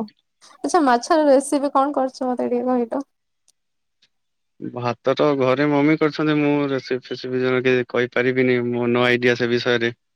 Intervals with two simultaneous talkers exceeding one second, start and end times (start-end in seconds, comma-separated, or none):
none